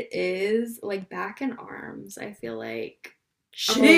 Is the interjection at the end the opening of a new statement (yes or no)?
yes